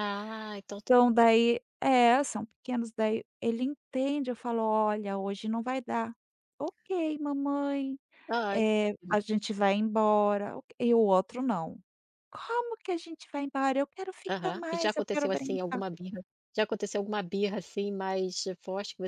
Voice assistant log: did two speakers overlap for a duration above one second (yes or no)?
yes